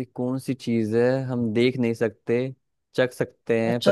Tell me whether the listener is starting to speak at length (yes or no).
yes